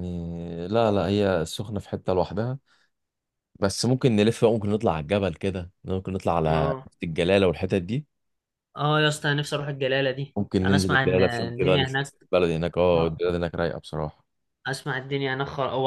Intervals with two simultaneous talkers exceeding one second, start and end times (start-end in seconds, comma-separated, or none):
10.4-12.1